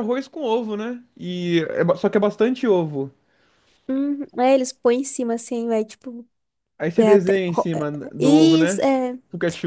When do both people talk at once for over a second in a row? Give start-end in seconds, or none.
7.0-8.8